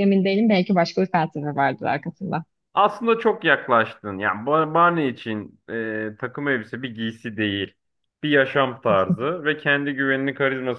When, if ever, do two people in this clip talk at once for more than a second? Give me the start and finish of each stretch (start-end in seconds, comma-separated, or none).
none